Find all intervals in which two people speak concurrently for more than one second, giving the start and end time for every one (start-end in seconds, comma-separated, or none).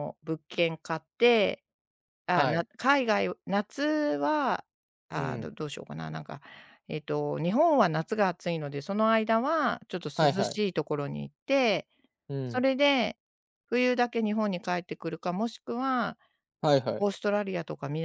none